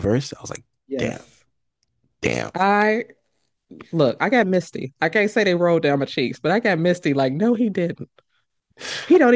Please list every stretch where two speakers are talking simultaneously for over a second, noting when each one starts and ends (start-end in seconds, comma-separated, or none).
none